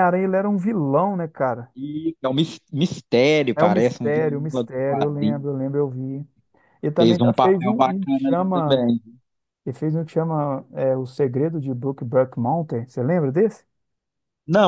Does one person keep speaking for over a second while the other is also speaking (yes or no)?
yes